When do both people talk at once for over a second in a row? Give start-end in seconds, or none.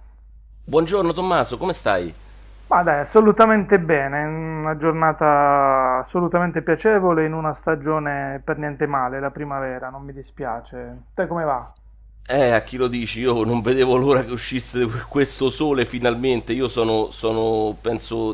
none